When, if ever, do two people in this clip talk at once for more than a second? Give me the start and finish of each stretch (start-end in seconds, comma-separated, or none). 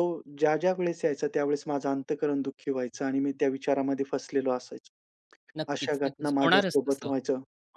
5.7-7.1